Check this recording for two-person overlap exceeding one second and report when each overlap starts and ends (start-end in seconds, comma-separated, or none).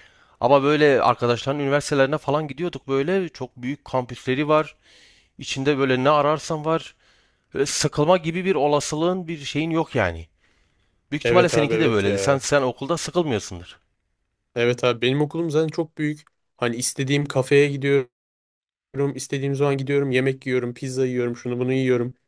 11.2-12.5